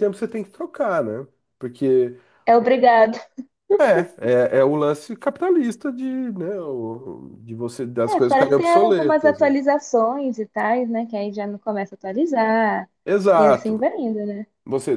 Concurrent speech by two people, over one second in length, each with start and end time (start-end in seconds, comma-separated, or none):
8.1-9.5